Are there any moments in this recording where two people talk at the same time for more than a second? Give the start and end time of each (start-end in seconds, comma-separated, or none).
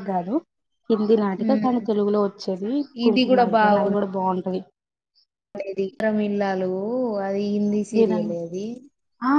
none